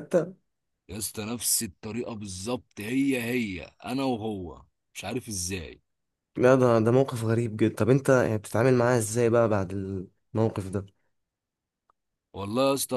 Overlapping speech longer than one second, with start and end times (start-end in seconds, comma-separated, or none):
none